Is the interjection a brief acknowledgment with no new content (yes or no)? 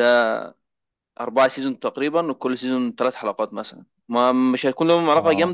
yes